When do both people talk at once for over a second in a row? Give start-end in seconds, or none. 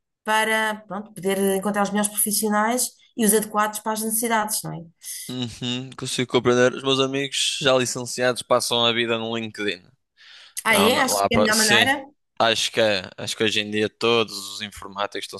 10.7-11.9